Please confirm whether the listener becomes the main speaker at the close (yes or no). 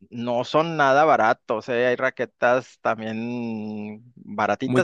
no